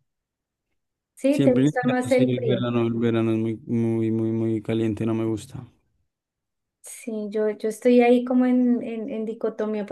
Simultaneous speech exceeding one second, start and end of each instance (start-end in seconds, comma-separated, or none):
1.3-2.7